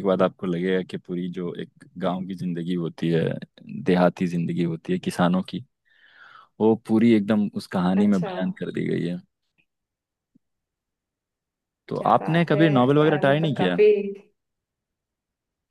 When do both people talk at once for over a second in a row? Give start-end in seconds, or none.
12.0-13.8